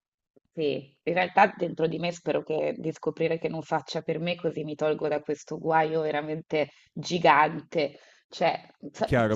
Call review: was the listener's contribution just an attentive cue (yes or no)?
no